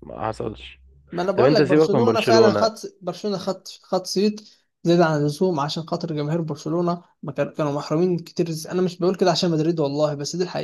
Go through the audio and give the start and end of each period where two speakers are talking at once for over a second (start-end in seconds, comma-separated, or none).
1.3-2.7